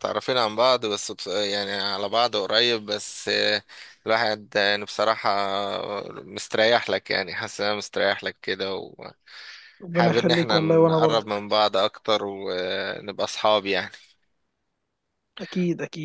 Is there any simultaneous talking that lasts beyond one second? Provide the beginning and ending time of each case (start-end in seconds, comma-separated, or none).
9.9-11.4